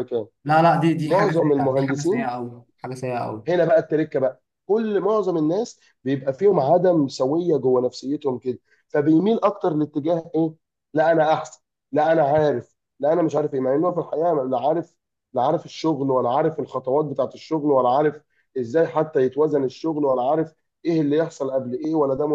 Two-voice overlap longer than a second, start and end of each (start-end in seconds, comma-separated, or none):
1.0-2.3